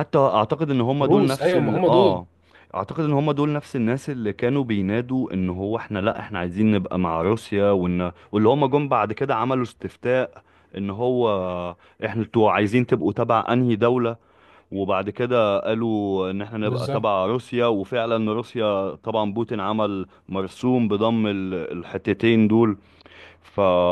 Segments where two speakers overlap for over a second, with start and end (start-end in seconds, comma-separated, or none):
1.0-2.2